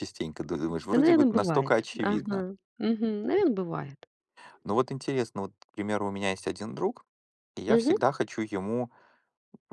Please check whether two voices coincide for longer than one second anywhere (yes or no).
yes